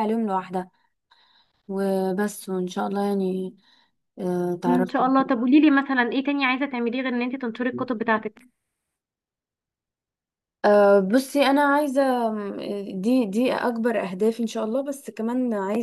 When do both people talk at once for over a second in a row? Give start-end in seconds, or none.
none